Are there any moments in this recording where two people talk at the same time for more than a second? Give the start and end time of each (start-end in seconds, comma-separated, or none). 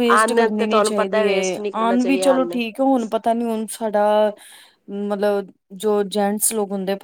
0.7-2.6